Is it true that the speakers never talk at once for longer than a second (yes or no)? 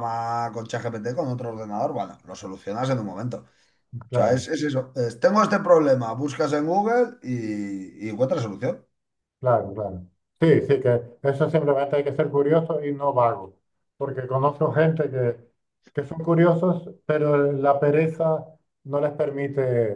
yes